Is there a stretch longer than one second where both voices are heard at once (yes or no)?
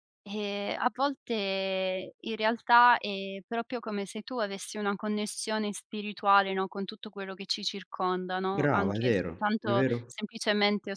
yes